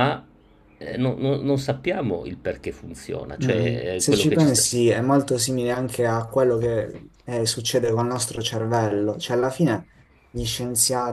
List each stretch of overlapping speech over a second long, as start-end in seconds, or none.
3.4-4.6